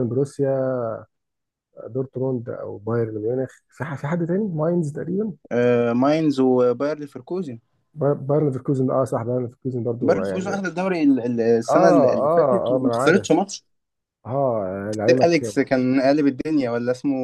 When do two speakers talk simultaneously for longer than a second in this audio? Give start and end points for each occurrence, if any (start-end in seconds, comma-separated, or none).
11.7-13.3